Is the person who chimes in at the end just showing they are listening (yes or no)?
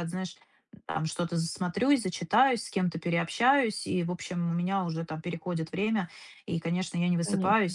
yes